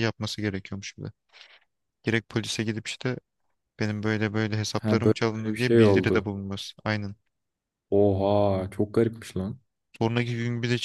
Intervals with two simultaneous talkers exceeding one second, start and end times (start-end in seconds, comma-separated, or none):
4.8-6.3